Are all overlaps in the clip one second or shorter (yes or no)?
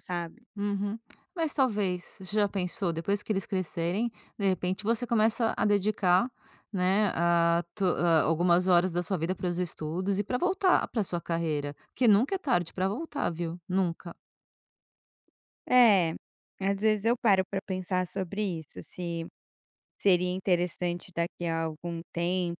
yes